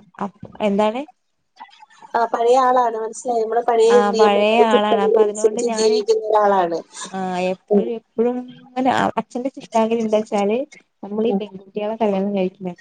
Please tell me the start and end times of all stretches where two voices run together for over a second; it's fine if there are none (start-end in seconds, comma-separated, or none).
4.0-6.0